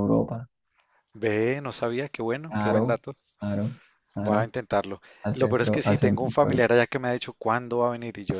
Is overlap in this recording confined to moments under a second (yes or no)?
no